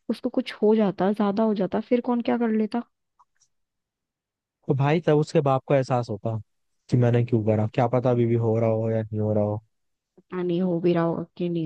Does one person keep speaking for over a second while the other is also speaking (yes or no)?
no